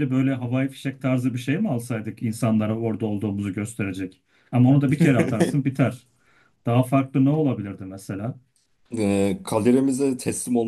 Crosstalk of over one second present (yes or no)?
no